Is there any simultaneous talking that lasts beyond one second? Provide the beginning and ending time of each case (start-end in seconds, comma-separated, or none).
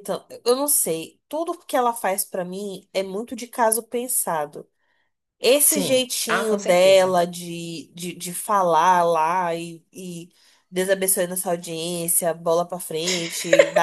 5.6-7.2